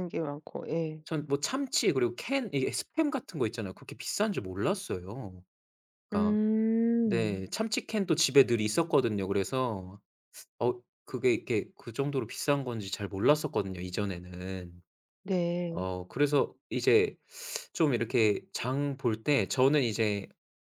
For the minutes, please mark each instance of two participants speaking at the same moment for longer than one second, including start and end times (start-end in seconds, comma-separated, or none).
none